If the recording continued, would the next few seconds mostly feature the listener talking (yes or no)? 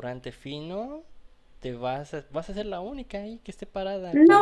yes